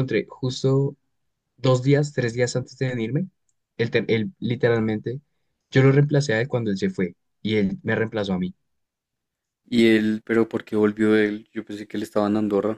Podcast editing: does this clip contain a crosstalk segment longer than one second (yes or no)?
no